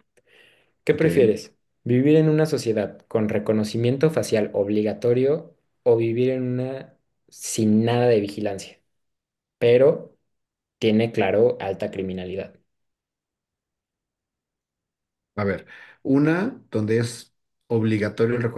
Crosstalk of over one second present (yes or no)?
no